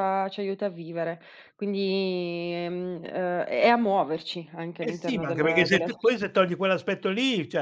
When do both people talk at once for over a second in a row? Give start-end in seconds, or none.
4.8-6.2